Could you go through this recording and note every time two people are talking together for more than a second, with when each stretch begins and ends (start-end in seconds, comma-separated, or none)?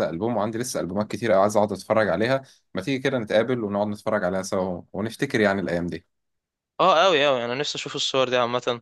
none